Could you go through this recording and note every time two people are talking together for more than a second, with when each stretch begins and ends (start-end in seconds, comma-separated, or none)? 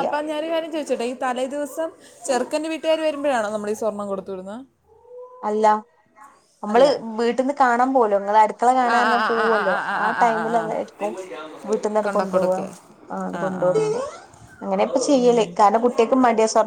8.9-10.9